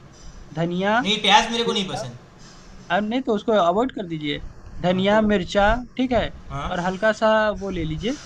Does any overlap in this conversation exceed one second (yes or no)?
no